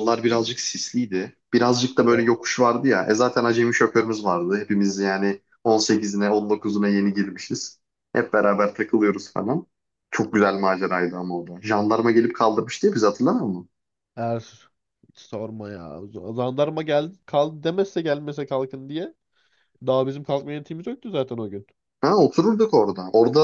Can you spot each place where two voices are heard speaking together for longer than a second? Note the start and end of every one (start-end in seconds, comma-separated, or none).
none